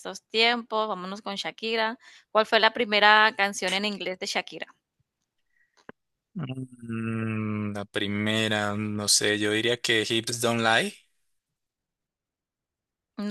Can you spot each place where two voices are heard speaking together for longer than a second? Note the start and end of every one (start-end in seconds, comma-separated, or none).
none